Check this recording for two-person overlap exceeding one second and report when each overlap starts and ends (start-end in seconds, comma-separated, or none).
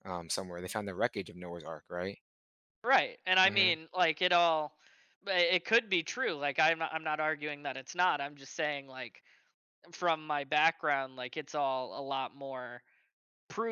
none